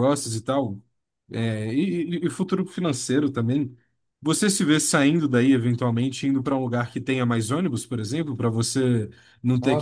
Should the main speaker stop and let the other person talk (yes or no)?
yes